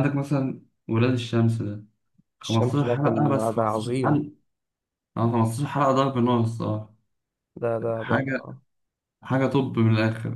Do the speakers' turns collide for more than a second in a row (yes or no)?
yes